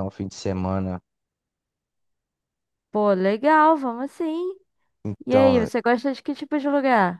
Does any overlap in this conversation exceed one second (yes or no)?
no